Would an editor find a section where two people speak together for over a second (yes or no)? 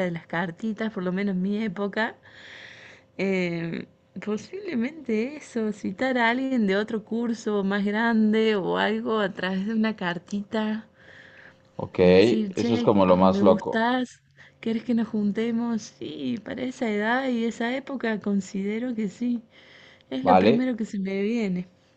yes